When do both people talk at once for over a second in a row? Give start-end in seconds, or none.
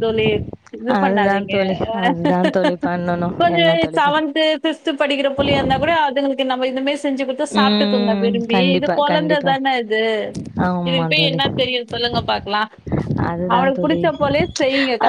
7.6-9.5